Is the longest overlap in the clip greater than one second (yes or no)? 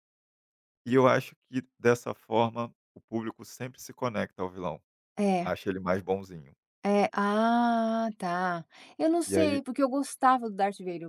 no